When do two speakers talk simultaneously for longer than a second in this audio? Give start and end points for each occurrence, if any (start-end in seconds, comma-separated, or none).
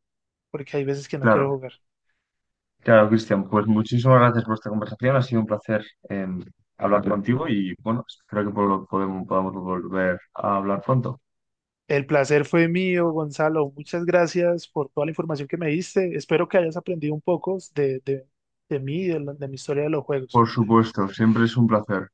none